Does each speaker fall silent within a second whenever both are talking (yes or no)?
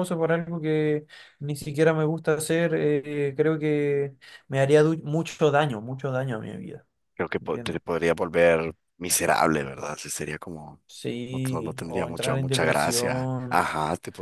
no